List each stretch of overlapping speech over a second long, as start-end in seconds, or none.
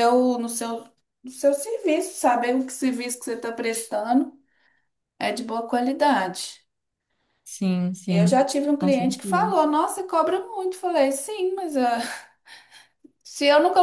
8.1-9.5